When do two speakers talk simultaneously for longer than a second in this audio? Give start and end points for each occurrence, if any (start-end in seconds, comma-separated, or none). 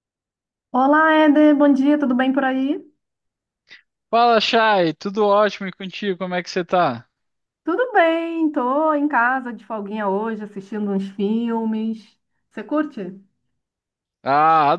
none